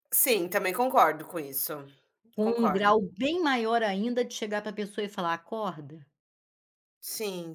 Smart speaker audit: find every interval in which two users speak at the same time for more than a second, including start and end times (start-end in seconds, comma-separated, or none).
none